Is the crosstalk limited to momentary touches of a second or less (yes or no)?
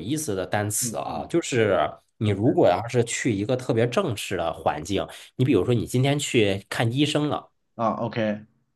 yes